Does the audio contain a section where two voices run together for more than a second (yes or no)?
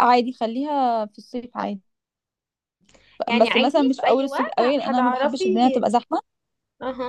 yes